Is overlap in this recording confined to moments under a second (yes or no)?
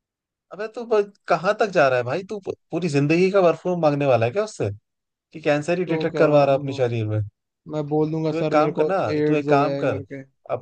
no